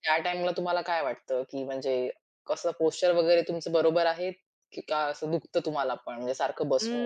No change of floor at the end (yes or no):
no